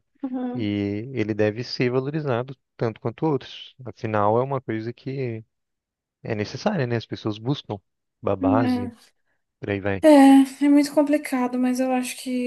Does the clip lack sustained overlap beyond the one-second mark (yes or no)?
yes